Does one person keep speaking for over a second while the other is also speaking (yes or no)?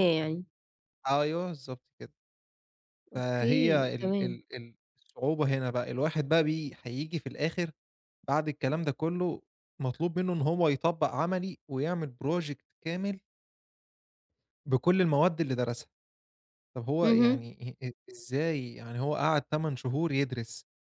yes